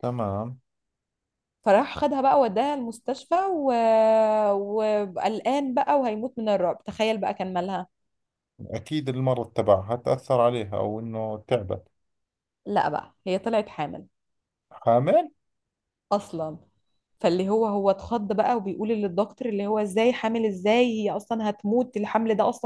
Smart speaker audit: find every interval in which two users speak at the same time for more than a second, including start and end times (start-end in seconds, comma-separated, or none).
none